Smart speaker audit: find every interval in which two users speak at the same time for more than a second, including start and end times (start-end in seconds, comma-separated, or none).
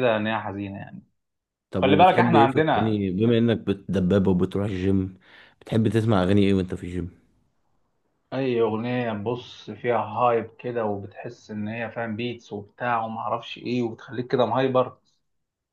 1.8-3.0